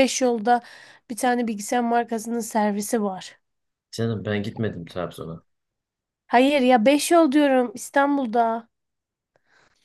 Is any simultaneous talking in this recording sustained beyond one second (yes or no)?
no